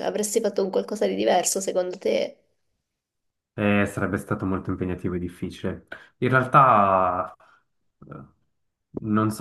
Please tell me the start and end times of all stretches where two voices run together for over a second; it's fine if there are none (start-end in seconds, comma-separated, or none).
none